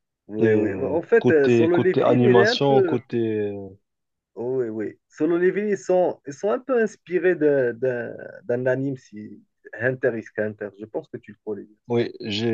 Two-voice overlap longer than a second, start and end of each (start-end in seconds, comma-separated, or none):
0.7-3.0